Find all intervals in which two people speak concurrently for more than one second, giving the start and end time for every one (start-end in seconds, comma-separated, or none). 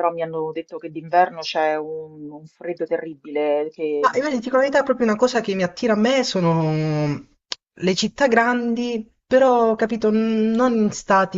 none